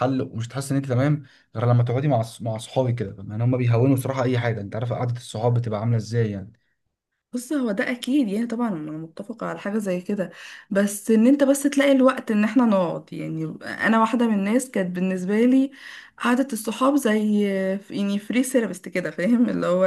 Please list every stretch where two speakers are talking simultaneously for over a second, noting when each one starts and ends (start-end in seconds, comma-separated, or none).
none